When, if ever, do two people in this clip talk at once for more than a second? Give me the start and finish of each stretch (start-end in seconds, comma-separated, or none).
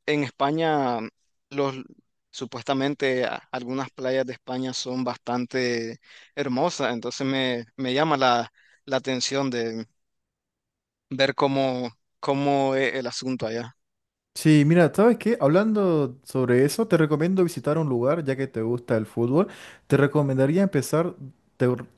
none